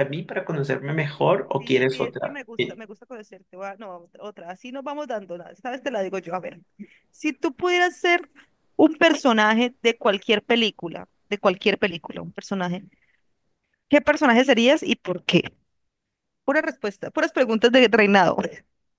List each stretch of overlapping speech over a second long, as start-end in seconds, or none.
1.2-2.8